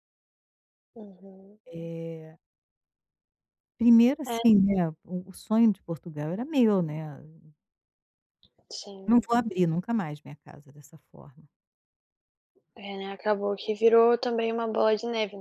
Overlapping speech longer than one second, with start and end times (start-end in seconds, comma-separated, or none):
none